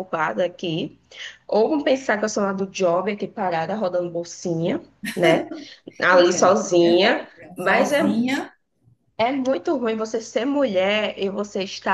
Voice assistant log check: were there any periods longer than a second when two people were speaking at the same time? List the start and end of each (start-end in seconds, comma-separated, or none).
6.3-8.0